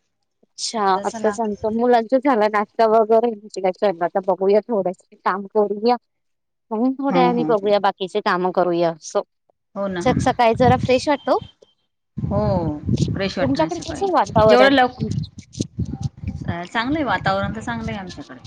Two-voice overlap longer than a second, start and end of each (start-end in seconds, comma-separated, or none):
13.4-14.7